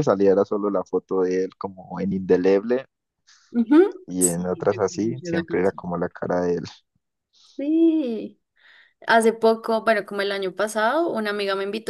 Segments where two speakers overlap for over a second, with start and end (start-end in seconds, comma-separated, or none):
4.2-5.8